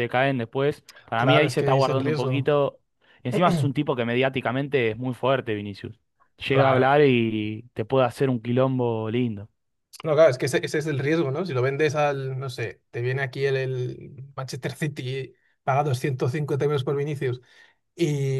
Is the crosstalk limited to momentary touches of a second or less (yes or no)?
no